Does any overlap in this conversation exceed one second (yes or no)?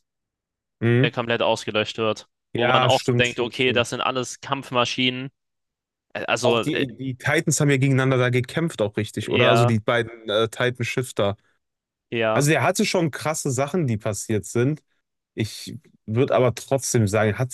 yes